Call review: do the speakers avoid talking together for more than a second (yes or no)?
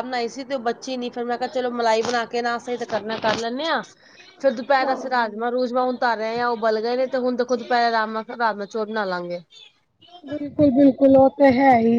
yes